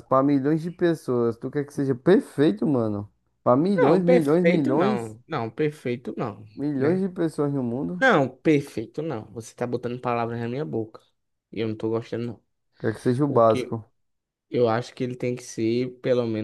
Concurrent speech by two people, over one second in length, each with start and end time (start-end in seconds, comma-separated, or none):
3.8-5.2